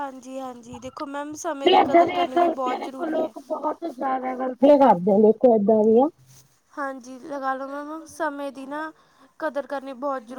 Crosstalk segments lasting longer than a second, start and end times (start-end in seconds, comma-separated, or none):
1.6-3.3